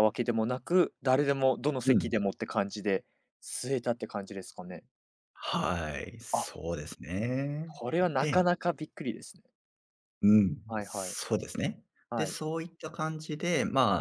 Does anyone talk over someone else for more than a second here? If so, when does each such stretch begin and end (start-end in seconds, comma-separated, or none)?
none